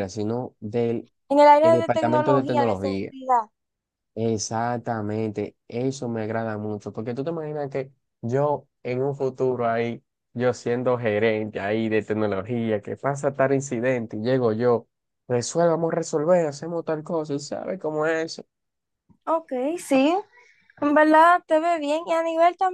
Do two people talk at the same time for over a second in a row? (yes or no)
yes